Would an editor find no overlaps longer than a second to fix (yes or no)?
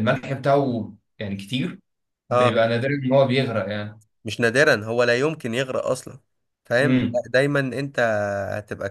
yes